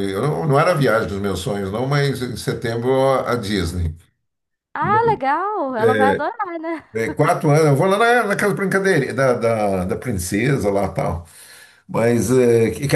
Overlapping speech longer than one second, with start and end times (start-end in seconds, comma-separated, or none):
none